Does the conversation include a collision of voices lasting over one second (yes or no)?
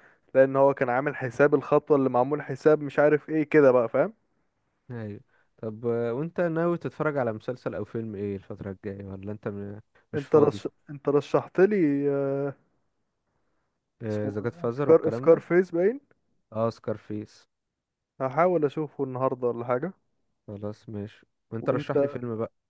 yes